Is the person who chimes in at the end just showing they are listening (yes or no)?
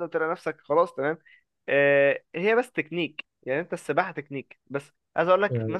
yes